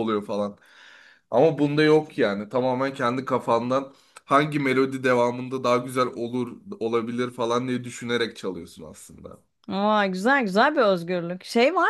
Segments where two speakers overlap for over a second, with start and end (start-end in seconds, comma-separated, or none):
none